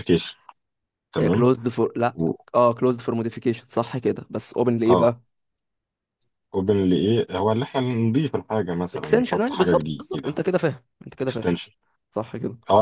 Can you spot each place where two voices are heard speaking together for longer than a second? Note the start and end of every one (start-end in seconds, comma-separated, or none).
8.9-10.4